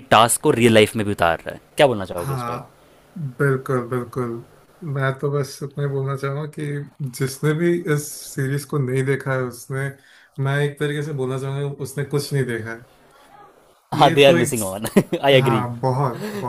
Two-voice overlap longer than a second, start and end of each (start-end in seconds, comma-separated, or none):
none